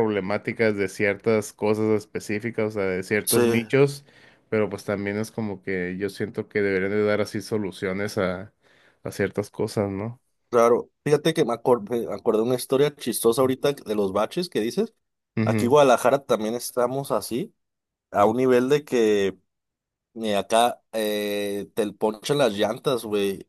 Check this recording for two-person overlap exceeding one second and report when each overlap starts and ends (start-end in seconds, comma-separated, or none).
none